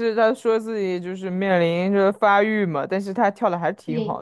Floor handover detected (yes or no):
yes